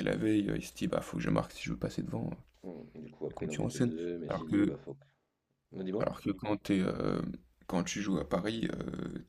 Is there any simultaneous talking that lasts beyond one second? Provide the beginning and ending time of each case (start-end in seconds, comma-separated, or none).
3.3-4.8